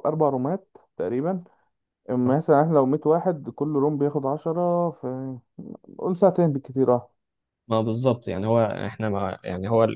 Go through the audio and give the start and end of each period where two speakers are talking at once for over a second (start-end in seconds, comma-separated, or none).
none